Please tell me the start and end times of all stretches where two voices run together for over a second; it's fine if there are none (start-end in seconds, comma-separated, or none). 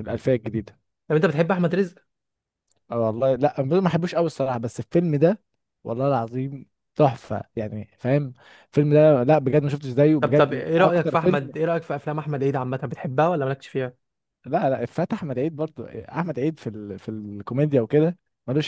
10.2-11.5